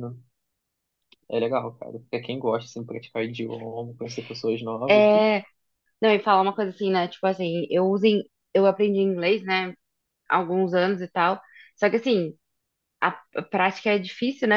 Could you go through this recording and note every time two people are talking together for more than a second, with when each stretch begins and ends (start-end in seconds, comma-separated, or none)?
none